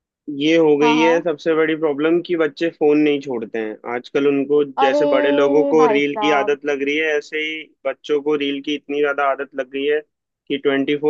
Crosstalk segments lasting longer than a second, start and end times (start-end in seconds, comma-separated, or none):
4.8-6.6